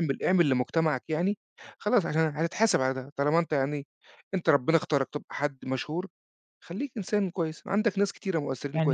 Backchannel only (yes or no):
no